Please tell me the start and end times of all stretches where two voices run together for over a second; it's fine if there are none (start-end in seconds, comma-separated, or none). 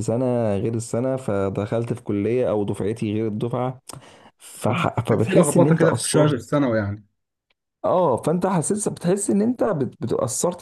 5.1-6.4